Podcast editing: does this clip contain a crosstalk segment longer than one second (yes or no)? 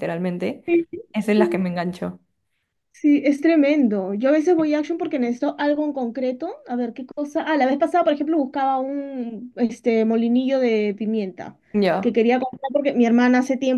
no